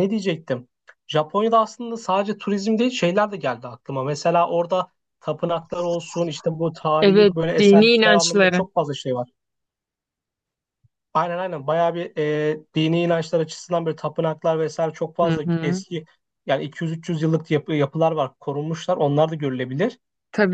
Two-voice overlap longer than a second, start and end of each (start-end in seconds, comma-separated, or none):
7.0-8.6